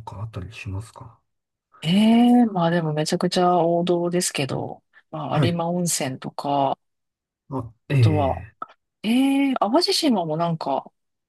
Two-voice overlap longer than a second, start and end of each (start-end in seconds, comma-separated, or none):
none